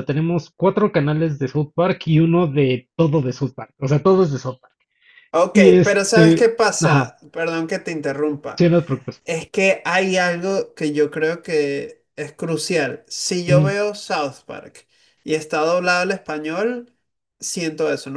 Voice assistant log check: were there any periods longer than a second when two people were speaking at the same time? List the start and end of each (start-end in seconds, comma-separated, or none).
5.5-7.1